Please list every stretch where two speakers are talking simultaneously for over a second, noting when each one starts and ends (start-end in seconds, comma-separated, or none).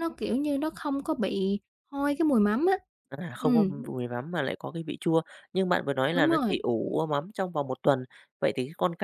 none